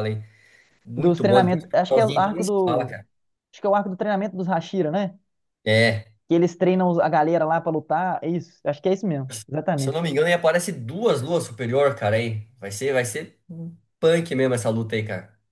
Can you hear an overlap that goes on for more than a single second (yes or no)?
yes